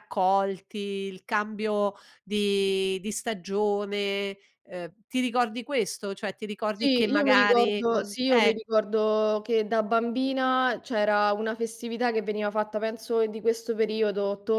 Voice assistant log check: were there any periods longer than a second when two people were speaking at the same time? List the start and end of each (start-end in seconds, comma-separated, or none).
6.8-8.6